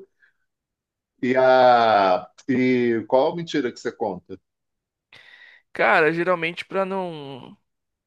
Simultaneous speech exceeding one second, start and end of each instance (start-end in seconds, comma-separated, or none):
none